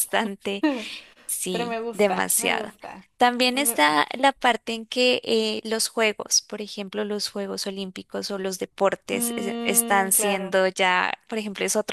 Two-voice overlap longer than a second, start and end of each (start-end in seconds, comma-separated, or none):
1.5-2.7, 9.1-10.5